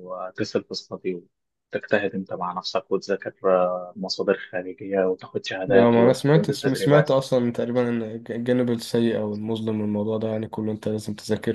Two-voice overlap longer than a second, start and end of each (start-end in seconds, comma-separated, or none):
5.7-7.1